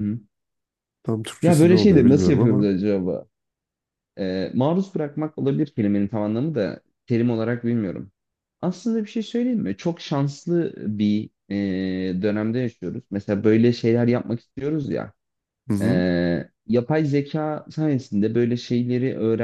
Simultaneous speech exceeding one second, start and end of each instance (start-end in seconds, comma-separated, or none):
1.4-2.7